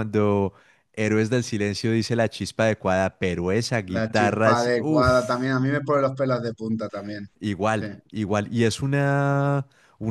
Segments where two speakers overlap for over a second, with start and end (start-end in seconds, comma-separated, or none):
3.9-5.5